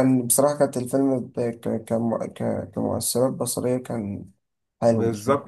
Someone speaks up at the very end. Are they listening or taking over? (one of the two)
taking over